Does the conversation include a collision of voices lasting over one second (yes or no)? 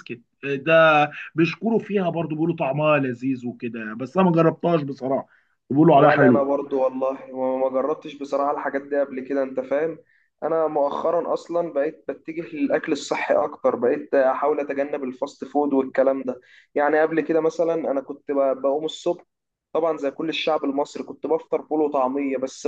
no